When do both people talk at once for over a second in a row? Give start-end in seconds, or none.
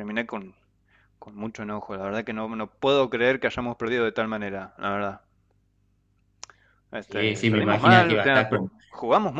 7.0-8.7